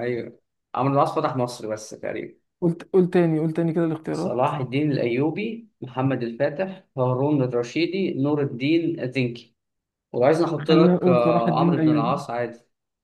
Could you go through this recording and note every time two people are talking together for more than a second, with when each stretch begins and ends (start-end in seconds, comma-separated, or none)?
10.6-12.2